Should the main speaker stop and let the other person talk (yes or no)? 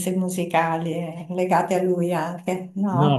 yes